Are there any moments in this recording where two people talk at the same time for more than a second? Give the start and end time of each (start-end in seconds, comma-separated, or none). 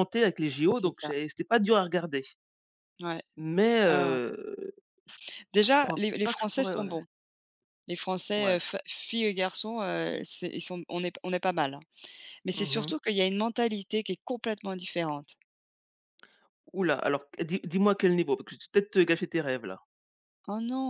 5.7-6.9